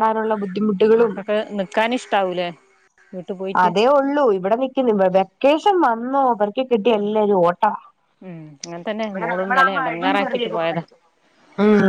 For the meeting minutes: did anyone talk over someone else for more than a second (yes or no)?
yes